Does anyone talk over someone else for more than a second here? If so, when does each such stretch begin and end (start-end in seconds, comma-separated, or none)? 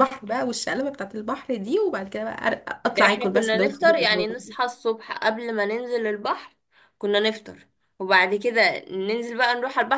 2.9-4.3